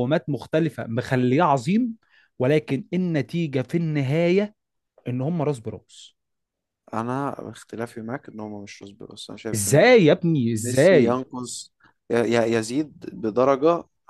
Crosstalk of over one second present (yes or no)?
no